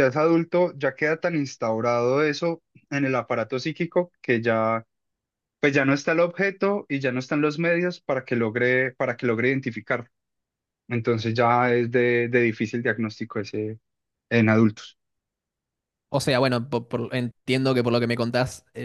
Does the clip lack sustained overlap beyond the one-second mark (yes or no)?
yes